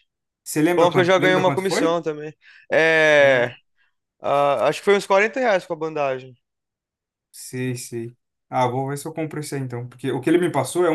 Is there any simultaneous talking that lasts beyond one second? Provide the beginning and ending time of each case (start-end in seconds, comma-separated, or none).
0.8-2.0